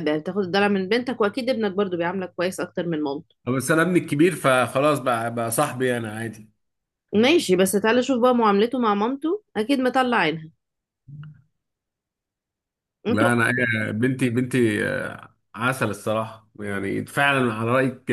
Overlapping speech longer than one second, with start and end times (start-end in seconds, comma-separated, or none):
none